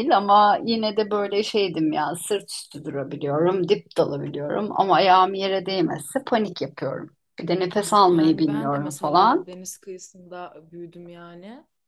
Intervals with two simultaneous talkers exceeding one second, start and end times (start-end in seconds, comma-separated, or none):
7.7-9.5